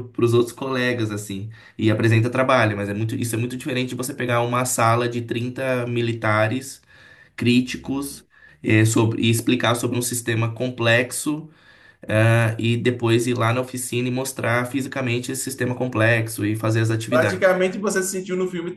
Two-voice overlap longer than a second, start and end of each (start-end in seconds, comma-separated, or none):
none